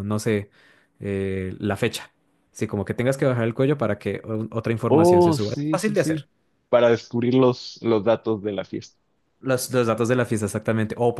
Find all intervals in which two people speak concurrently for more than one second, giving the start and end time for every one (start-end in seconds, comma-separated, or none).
4.9-6.2